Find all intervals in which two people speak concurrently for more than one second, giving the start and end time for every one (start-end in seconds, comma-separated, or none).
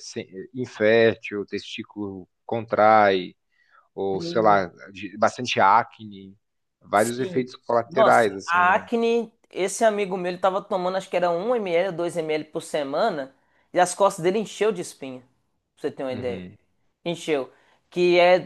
6.9-8.8